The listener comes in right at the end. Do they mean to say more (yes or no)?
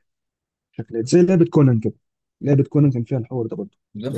yes